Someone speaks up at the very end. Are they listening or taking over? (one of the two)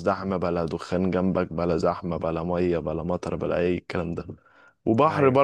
listening